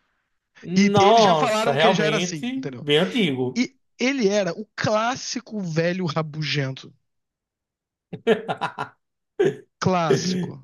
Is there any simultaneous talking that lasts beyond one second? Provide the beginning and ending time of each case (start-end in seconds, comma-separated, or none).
0.8-2.9